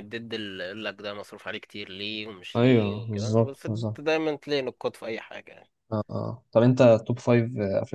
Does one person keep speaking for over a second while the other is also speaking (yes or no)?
yes